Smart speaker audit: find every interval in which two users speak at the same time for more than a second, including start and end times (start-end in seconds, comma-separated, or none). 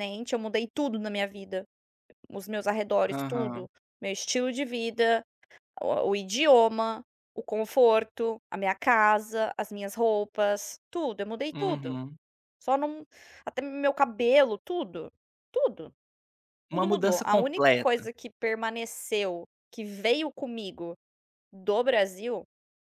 16.7-18.1